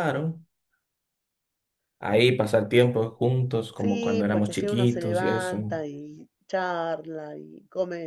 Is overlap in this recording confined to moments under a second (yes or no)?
no